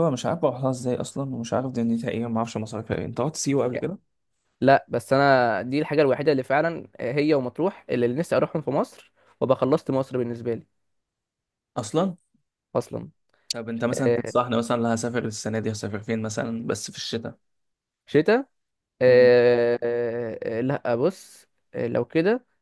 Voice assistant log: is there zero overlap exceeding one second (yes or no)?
yes